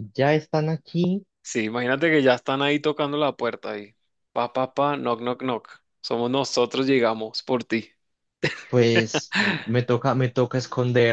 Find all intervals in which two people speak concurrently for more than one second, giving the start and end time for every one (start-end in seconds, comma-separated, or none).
none